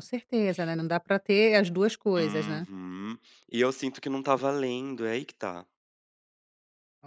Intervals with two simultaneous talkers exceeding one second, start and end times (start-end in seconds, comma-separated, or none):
none